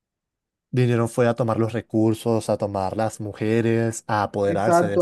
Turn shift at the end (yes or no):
yes